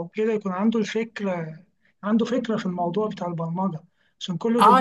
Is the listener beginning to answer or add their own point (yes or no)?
yes